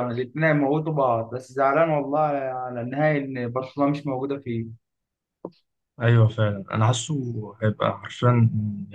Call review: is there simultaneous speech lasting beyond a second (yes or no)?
no